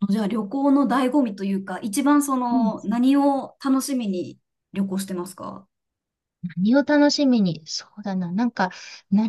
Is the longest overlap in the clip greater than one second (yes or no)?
no